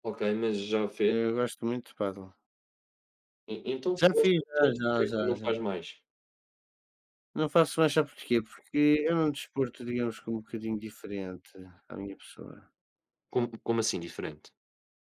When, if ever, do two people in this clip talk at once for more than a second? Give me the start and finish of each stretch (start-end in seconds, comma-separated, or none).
4.0-5.6